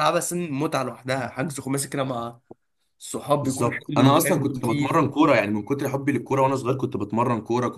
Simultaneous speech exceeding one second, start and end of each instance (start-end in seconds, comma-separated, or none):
3.4-5.0